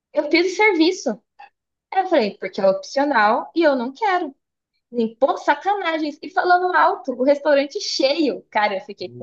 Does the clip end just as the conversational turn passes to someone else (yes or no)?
no